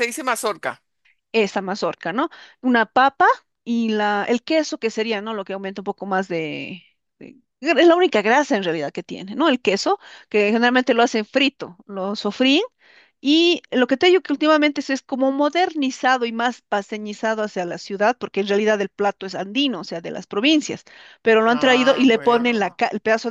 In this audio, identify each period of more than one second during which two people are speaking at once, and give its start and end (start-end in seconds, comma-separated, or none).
21.5-22.7